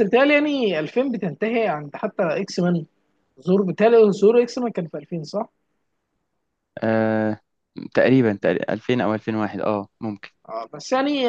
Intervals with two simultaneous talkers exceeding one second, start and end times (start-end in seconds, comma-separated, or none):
none